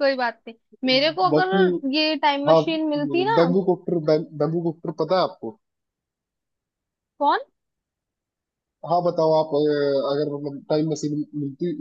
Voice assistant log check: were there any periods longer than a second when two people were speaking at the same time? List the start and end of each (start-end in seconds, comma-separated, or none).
none